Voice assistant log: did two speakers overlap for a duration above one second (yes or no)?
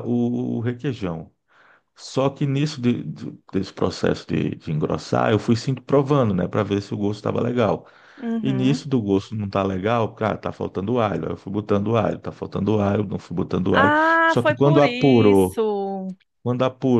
yes